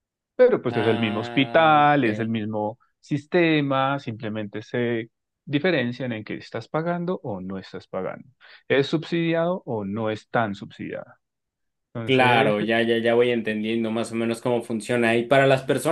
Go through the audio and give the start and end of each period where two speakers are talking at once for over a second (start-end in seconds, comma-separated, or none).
0.7-2.3